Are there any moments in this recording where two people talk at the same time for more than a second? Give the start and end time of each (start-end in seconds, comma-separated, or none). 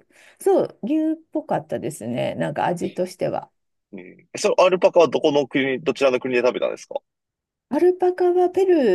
none